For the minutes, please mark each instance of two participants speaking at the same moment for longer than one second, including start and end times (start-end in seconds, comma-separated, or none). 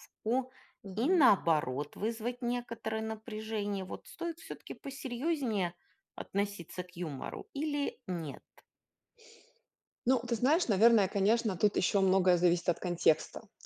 none